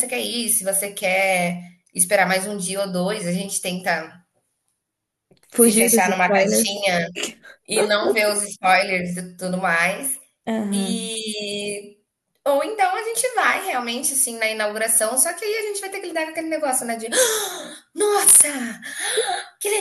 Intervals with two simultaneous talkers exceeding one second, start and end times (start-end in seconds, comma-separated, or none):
5.5-6.8